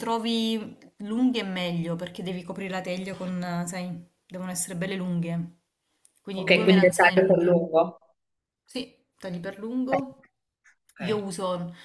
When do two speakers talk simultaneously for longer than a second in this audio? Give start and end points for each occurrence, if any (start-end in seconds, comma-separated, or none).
6.3-7.7